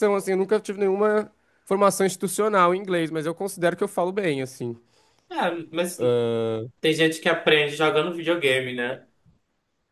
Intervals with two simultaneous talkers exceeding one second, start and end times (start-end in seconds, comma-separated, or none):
none